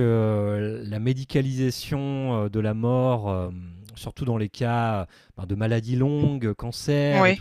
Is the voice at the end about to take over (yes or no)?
no